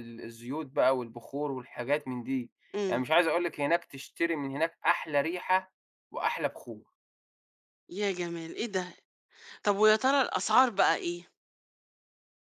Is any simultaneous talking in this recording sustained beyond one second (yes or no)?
no